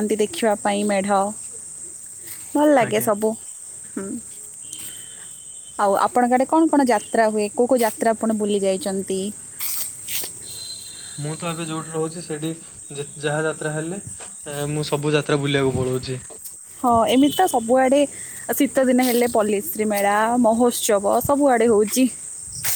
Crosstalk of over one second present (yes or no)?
no